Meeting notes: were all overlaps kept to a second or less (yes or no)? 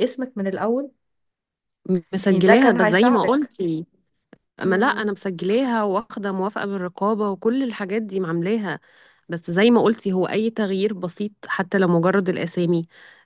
no